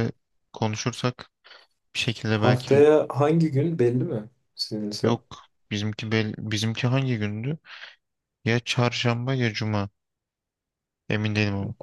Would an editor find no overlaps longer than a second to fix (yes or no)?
yes